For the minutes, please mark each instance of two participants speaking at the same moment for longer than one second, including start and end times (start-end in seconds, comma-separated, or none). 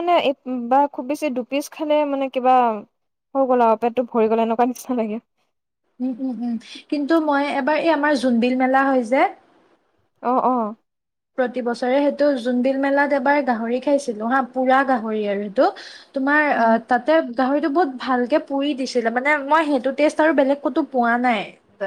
none